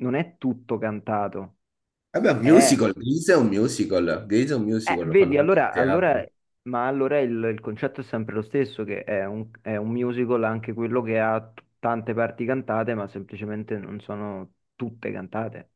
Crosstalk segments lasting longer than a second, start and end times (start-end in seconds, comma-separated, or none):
4.9-6.2